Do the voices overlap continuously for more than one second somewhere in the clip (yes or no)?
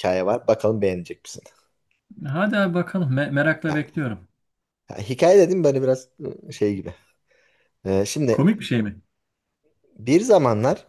no